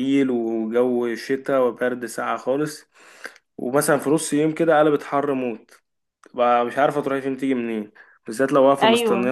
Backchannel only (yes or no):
yes